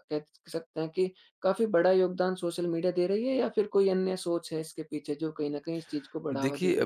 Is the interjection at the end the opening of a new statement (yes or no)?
yes